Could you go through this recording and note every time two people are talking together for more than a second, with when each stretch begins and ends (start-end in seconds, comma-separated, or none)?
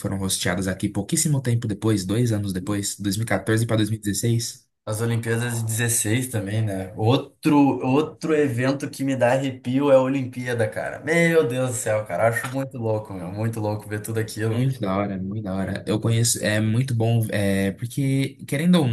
none